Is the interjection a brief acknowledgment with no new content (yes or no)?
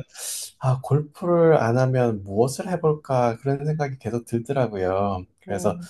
yes